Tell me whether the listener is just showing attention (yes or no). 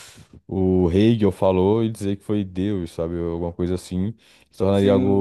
no